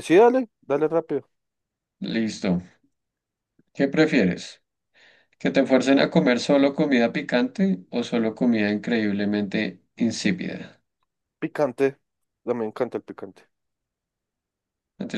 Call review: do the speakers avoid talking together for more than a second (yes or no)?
yes